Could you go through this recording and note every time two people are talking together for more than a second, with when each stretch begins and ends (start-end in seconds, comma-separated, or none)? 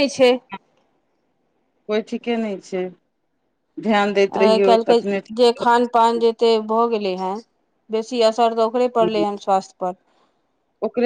4.4-6.4